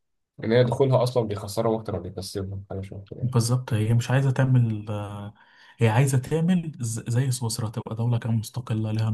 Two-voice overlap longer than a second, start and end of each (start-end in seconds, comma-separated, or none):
none